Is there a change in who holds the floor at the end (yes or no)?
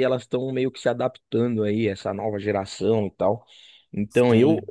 no